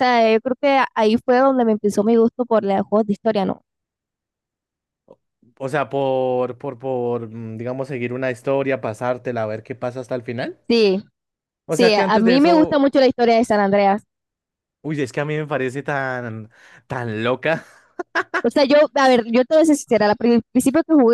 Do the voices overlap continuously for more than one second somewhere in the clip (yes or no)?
yes